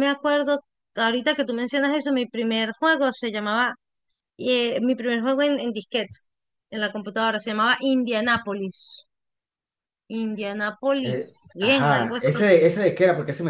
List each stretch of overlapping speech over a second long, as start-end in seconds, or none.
11.0-12.4